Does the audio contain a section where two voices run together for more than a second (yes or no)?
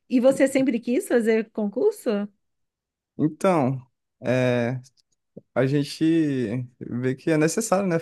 no